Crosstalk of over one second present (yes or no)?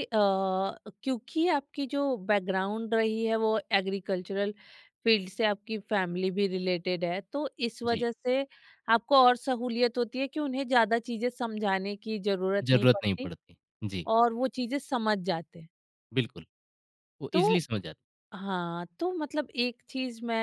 no